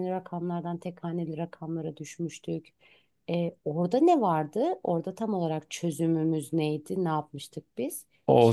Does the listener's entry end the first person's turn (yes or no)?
yes